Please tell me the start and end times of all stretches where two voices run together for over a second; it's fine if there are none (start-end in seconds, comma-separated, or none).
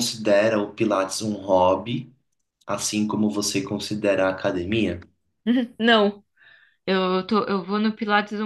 none